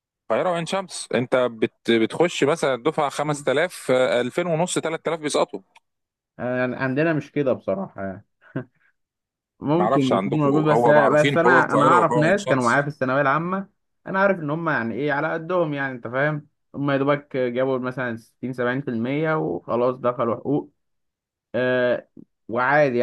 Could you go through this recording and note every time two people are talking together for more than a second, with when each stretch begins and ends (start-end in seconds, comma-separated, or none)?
9.7-12.9